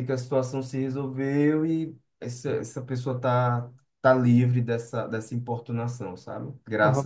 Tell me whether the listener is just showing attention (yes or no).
no